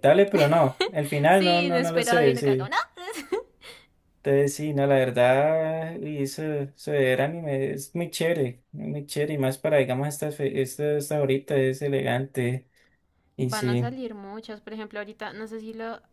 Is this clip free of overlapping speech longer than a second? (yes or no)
no